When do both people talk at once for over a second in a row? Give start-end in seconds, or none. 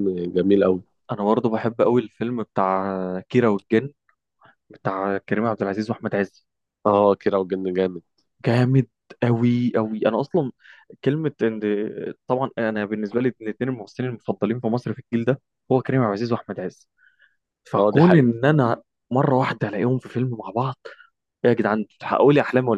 none